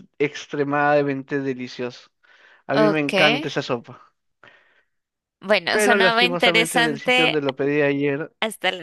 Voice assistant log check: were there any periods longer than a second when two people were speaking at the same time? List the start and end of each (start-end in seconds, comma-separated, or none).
5.7-7.4